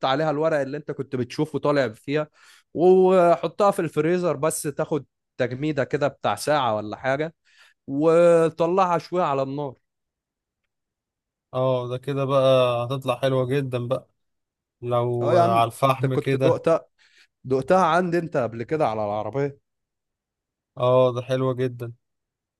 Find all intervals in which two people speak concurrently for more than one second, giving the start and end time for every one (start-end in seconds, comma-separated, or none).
15.2-16.6